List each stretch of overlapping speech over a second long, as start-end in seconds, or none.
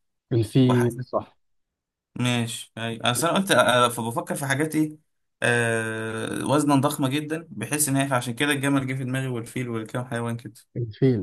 none